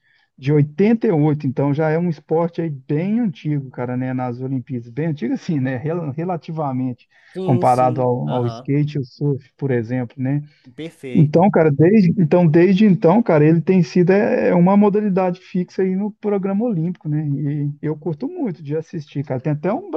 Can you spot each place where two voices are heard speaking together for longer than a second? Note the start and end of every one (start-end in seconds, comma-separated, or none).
7.4-8.7